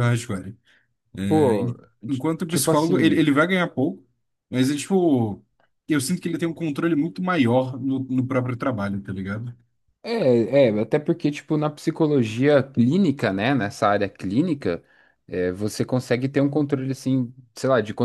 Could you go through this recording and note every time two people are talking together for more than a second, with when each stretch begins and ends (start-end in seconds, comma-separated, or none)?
1.3-3.2